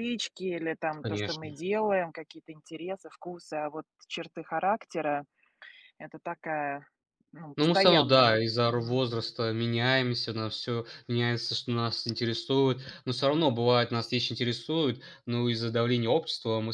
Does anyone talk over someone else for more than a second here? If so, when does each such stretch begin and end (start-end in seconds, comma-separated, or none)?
7.5-9.0